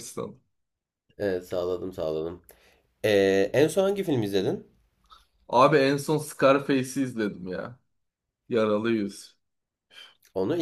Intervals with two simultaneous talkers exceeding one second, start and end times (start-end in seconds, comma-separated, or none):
none